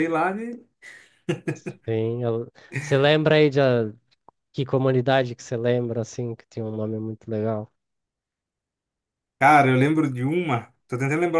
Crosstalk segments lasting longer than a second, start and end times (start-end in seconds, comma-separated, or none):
none